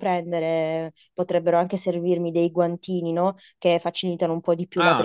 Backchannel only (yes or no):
no